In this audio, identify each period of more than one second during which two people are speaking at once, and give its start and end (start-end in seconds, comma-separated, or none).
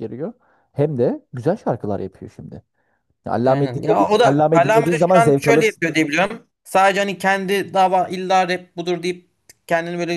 3.5-5.7